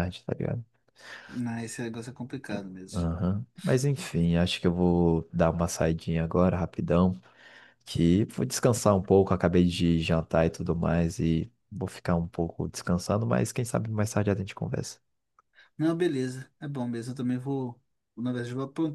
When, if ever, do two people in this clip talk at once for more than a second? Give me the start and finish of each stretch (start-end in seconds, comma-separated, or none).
none